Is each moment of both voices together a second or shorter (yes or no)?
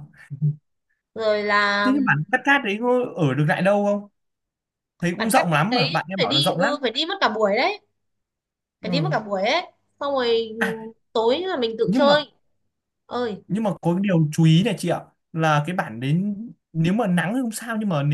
no